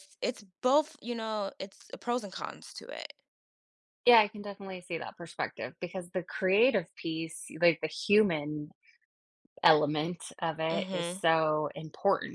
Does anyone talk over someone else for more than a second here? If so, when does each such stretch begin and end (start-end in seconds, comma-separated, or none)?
none